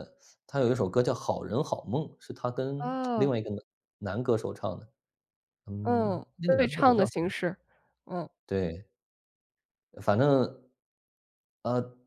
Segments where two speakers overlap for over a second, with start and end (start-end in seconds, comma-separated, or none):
5.8-7.3